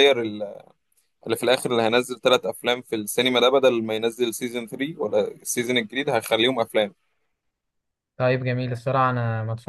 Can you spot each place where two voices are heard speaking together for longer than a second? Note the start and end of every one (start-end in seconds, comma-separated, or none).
none